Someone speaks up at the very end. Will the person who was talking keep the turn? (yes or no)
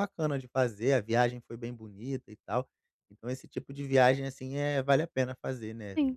no